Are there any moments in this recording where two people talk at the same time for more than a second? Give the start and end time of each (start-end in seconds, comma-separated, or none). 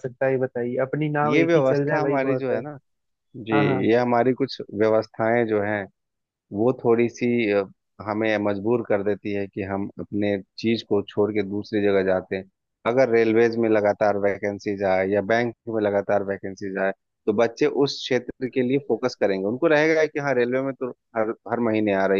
1.2-2.6